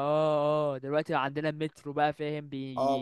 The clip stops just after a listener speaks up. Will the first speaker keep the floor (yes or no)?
no